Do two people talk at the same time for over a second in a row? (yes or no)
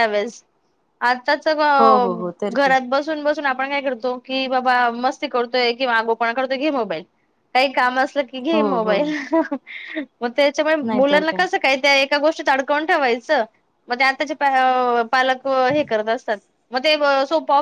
no